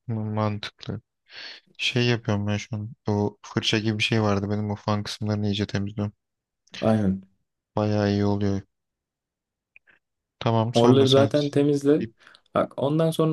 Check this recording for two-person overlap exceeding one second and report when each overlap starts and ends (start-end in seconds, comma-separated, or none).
none